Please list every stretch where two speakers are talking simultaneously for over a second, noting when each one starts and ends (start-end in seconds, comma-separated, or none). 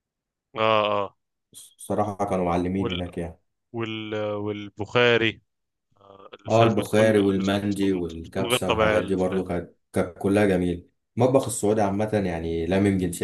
6.5-9.4